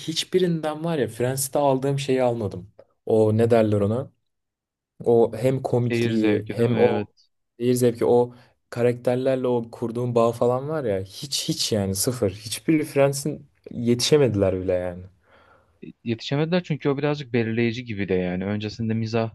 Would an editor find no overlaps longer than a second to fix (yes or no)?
no